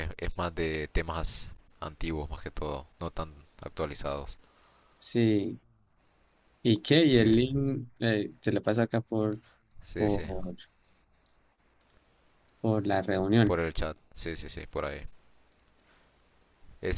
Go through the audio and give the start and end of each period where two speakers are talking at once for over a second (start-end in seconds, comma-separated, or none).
none